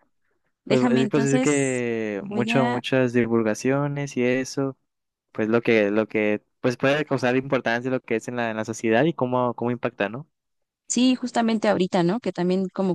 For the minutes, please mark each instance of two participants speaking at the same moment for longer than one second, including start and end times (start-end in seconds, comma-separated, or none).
0.7-2.8